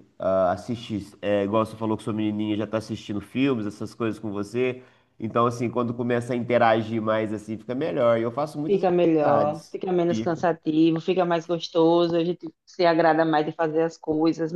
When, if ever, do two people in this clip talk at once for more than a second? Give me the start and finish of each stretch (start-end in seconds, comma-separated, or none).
8.7-10.5